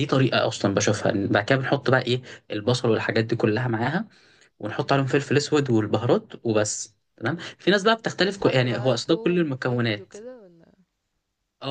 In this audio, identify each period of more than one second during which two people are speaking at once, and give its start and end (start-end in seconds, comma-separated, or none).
8.2-10.1